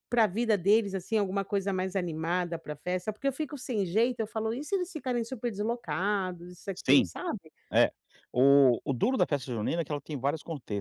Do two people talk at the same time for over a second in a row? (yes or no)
no